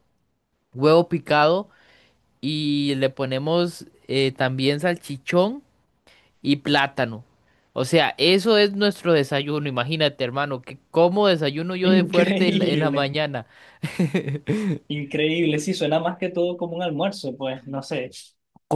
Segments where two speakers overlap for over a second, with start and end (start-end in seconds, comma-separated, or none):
11.9-13.1